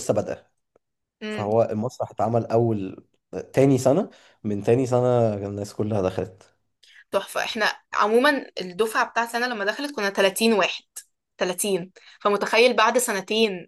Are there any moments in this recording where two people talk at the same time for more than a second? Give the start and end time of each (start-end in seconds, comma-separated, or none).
none